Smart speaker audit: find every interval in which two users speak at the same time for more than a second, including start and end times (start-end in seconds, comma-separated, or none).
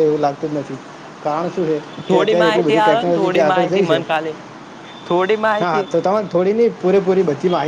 2.1-4.0